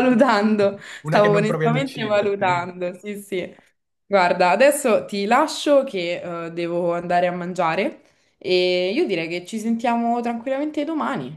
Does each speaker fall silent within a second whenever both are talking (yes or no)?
no